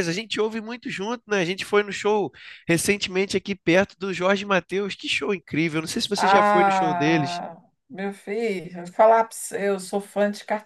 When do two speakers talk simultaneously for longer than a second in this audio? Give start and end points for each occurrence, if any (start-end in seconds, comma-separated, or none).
6.2-7.4